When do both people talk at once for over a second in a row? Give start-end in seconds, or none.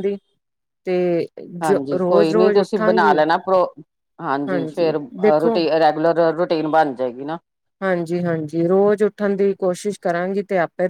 1.6-3.2